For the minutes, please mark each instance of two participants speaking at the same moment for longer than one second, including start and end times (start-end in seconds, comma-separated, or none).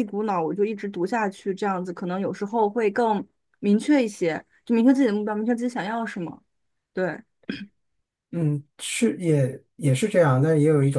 none